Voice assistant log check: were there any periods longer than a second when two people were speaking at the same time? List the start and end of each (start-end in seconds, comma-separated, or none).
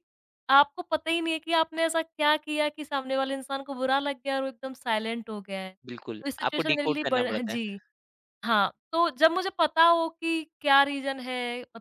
5.8-7.6